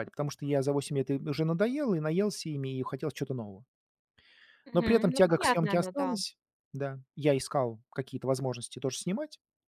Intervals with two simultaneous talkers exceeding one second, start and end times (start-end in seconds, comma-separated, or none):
4.7-6.2